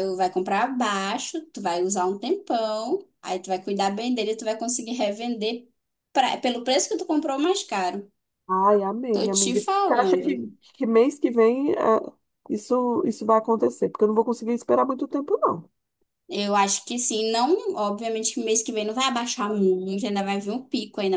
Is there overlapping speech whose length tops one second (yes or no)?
yes